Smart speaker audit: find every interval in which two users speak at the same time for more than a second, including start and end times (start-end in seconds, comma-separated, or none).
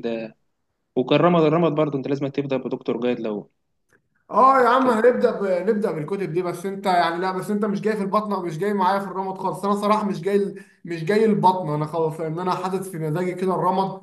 none